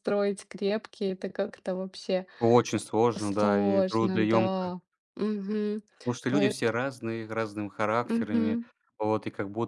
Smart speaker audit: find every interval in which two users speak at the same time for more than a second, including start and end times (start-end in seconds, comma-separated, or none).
3.2-4.7